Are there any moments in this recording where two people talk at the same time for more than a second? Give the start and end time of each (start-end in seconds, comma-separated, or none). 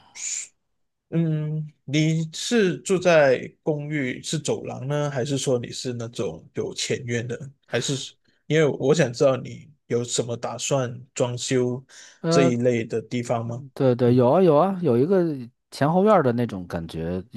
none